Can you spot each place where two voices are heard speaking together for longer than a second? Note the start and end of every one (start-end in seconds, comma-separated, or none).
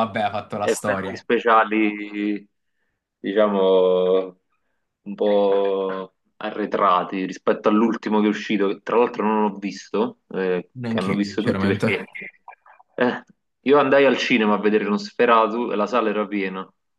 10.7-12.0